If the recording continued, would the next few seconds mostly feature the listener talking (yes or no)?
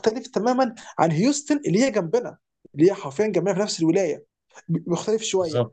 no